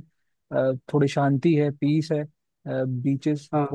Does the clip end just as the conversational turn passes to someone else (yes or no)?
no